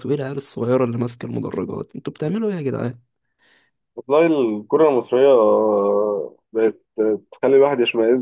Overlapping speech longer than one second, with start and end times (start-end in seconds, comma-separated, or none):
none